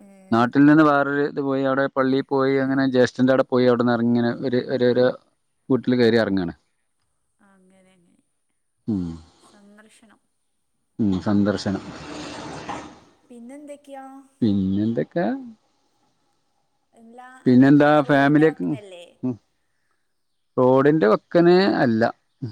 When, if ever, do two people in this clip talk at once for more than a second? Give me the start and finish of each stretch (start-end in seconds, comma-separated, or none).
17.5-19.0